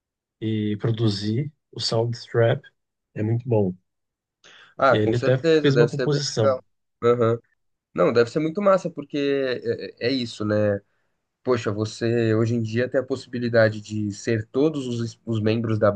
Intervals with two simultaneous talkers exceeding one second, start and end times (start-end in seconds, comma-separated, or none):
4.9-6.6